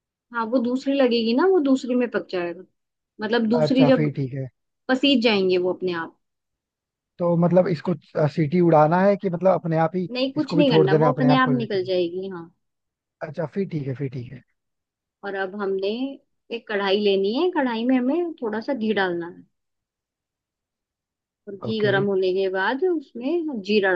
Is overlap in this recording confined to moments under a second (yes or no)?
no